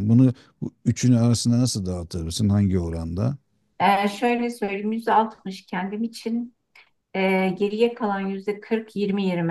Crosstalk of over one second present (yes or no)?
no